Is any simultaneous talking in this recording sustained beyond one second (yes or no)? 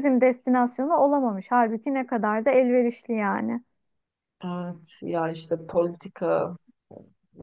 no